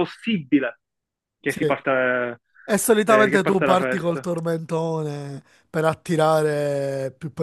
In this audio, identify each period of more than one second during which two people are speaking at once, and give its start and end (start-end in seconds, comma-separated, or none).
3.0-4.3